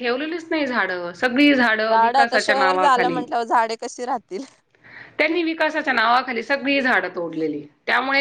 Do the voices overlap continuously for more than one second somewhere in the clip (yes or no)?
yes